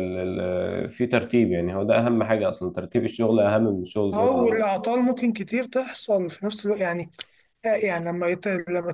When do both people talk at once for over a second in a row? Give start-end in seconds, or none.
none